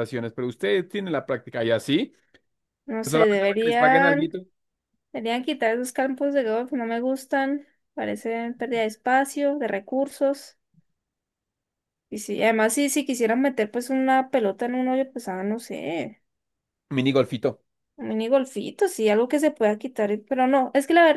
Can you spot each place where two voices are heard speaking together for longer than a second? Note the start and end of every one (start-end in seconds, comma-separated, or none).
3.0-4.3